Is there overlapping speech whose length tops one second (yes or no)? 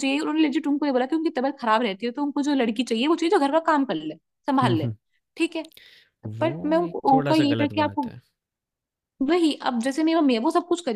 yes